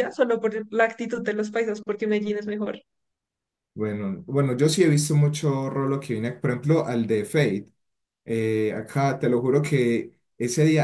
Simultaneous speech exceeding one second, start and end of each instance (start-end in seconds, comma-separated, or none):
none